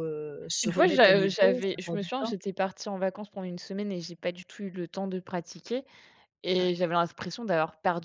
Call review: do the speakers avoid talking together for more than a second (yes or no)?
no